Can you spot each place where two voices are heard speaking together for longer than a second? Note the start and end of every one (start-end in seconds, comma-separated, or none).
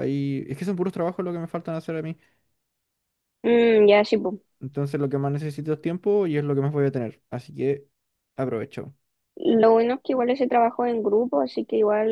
none